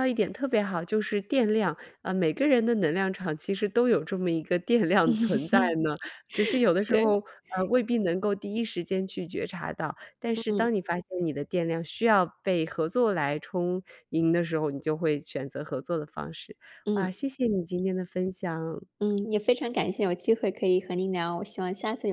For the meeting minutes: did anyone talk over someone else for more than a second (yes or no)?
no